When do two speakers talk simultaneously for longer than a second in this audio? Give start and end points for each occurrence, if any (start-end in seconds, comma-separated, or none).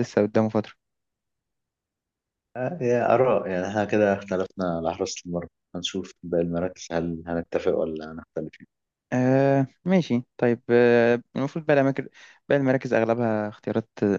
none